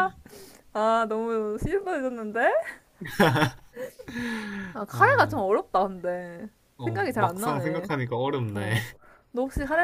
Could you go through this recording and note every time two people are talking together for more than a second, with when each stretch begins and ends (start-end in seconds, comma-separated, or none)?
6.8-8.8